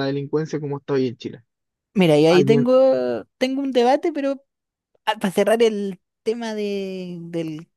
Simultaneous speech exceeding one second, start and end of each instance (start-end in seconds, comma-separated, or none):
none